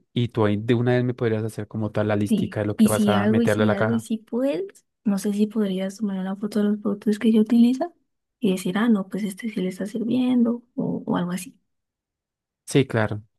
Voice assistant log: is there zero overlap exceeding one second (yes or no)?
no